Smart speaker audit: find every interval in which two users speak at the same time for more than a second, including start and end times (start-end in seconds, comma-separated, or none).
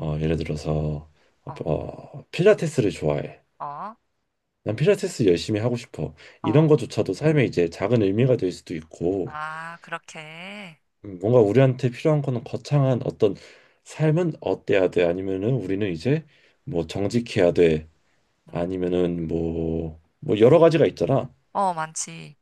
none